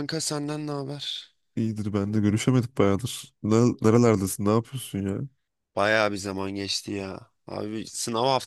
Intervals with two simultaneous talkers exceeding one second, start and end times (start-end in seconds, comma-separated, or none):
none